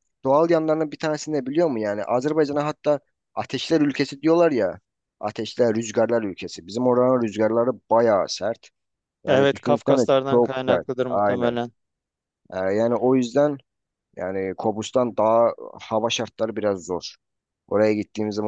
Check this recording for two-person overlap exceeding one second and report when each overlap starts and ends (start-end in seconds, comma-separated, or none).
9.3-11.6